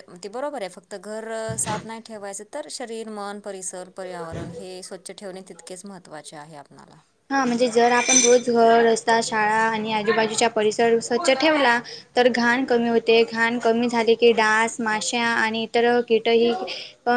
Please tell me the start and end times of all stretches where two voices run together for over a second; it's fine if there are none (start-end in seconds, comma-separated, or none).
none